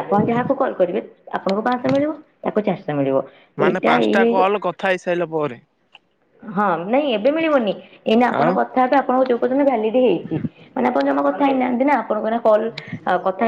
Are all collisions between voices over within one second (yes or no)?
yes